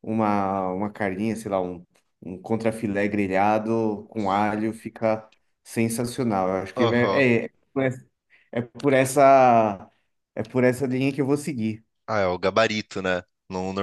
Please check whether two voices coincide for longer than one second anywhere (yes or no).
no